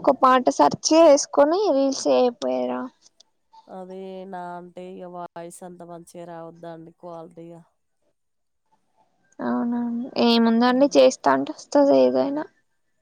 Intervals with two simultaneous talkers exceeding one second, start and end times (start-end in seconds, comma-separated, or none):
none